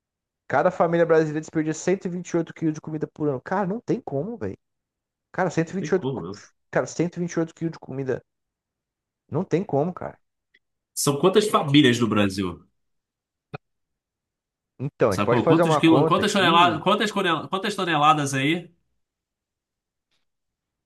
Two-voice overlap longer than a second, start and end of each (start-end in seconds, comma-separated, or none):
15.1-16.8